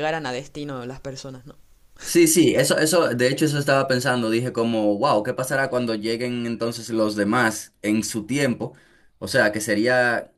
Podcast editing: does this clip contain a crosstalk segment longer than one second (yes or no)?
no